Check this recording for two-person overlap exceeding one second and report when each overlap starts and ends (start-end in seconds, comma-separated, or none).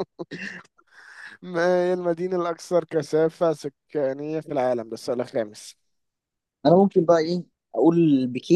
none